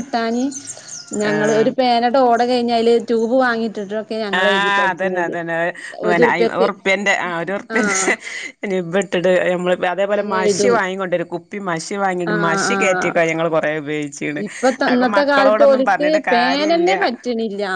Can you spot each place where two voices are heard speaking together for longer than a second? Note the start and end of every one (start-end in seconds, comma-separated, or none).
14.9-16.9